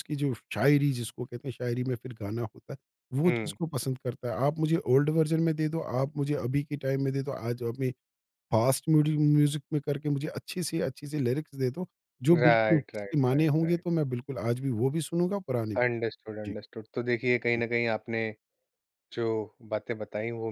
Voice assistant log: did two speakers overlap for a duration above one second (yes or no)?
yes